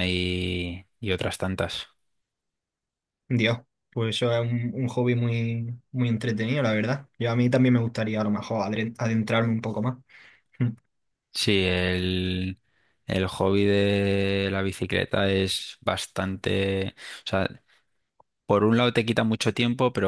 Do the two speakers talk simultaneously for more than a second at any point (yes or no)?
no